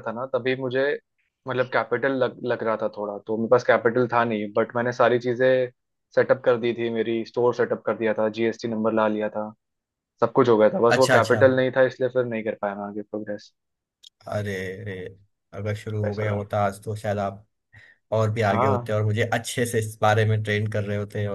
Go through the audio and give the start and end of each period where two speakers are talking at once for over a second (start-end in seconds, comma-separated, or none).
none